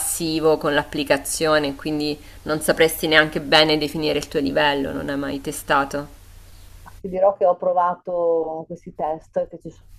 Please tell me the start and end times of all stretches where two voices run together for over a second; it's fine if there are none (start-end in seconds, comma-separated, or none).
none